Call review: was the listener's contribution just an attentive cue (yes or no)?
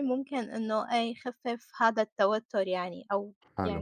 yes